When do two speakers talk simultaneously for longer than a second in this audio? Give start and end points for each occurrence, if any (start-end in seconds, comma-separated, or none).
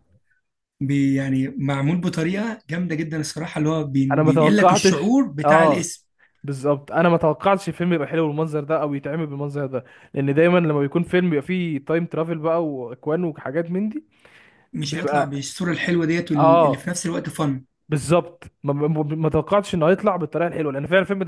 4.1-5.9